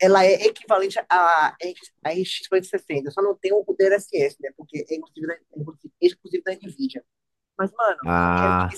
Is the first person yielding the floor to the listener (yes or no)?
no